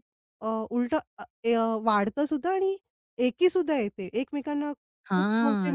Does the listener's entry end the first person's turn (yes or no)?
yes